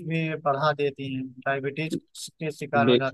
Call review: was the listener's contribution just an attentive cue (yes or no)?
yes